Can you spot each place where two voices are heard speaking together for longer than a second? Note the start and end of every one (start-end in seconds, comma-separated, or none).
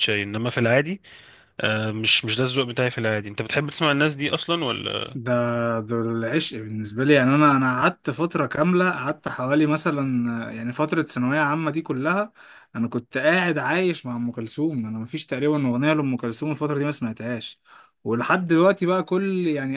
none